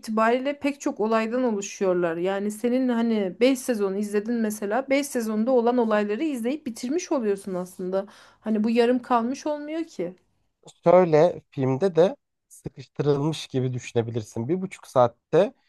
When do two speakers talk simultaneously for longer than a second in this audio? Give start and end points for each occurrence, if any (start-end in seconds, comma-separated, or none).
none